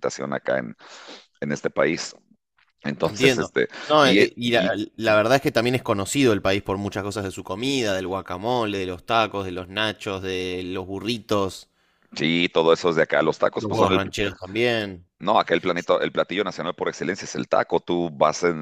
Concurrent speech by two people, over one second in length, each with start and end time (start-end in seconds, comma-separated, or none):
3.0-4.7